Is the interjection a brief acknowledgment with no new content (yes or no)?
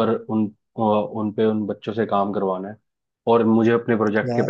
yes